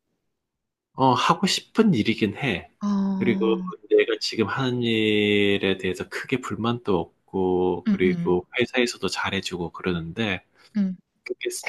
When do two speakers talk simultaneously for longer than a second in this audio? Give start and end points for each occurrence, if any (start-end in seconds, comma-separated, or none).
none